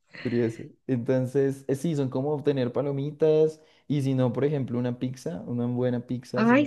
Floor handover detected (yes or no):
yes